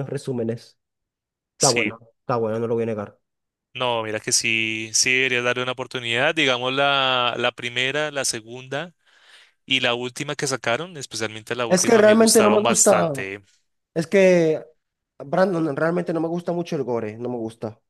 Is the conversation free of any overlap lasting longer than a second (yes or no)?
no